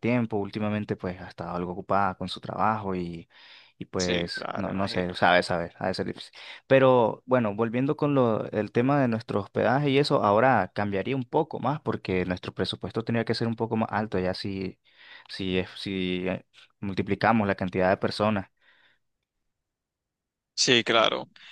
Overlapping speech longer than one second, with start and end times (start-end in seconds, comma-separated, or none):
4.0-5.2